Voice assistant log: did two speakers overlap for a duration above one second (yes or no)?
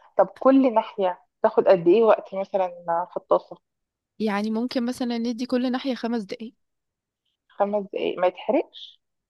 no